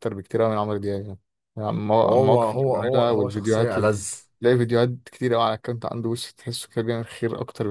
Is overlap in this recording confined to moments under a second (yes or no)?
no